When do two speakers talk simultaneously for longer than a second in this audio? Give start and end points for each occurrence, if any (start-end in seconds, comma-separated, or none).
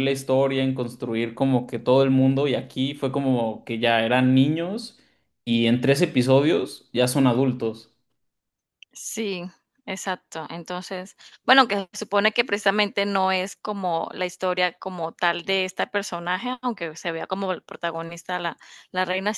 none